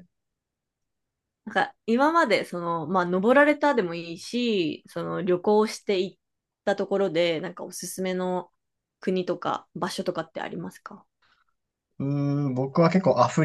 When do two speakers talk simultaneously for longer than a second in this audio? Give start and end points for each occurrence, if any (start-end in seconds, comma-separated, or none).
none